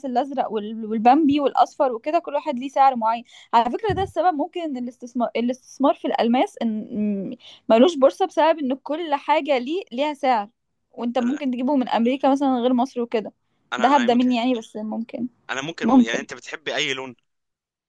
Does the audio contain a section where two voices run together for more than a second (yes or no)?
no